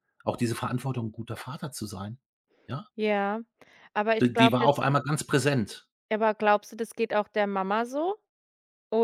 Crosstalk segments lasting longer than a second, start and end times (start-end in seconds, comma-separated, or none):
none